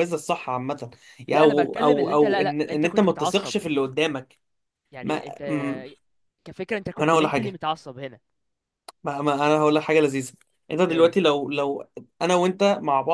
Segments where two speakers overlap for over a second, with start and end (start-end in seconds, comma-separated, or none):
1.3-3.5